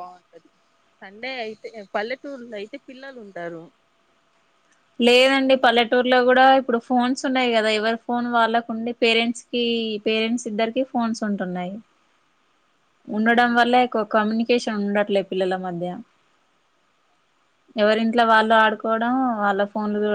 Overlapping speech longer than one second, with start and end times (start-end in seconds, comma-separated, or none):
none